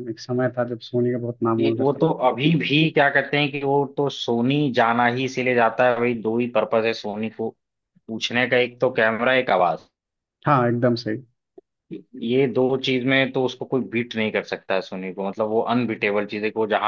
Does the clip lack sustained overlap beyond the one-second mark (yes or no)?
yes